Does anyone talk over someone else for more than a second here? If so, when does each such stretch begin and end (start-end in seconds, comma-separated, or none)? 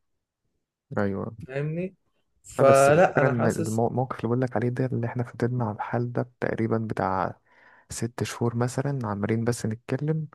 2.6-3.8